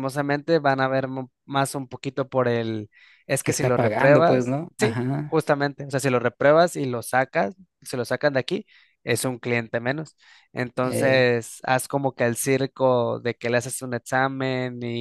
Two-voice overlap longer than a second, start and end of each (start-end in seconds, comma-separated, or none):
3.4-5.4